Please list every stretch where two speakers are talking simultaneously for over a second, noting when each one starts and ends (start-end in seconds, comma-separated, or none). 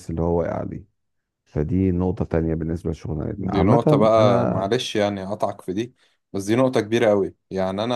3.4-4.7